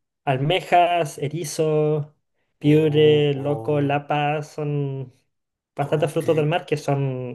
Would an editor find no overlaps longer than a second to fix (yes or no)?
no